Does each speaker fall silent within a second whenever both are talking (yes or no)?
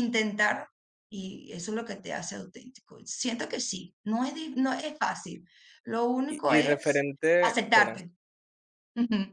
no